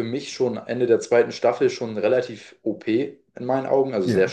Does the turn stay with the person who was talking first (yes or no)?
yes